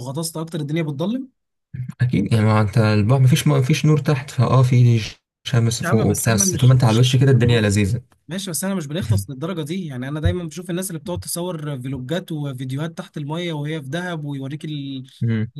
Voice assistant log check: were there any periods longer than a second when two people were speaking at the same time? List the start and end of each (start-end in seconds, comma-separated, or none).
5.8-7.1